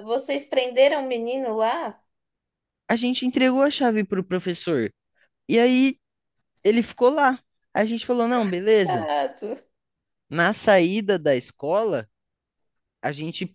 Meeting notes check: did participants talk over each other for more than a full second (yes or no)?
no